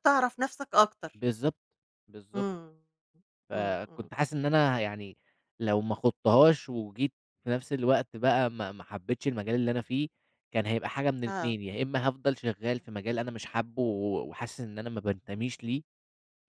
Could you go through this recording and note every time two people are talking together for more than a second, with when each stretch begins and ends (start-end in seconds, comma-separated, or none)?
none